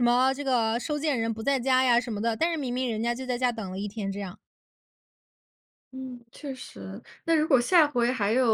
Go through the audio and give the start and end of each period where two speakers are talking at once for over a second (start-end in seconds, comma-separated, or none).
none